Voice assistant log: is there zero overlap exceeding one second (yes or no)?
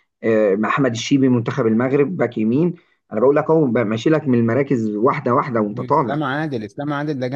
yes